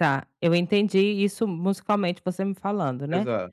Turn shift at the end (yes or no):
no